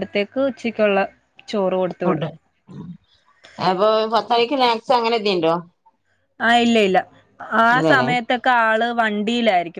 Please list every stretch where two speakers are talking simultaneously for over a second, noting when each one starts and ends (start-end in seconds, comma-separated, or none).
none